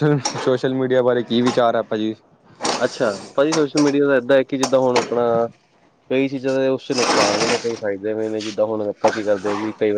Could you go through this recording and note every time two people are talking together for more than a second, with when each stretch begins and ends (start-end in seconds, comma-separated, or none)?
none